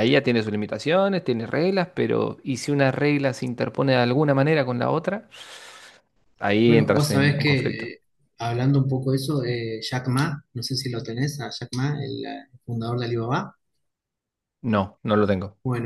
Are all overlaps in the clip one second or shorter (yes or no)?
no